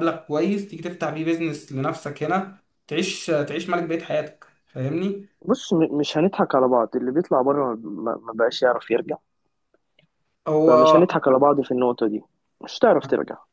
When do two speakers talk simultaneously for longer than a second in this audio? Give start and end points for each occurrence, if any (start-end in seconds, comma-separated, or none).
none